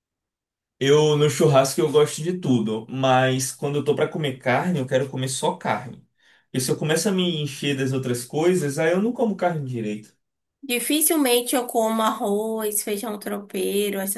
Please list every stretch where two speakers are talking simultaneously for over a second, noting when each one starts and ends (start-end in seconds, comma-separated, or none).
none